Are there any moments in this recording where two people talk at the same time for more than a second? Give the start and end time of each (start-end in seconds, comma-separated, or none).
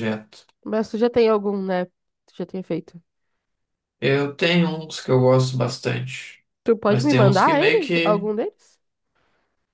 6.8-8.3